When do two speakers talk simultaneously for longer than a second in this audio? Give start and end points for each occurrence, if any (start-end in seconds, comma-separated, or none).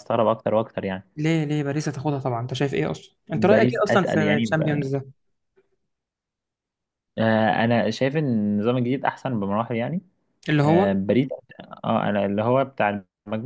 3.3-4.9